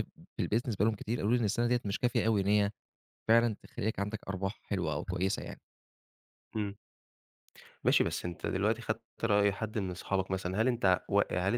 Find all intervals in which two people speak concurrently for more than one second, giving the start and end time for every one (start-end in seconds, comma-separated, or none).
none